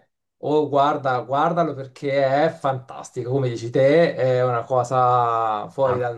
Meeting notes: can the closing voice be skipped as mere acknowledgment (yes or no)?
no